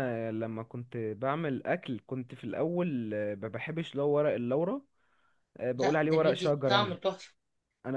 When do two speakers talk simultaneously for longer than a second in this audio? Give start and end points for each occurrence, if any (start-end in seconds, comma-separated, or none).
5.8-7.0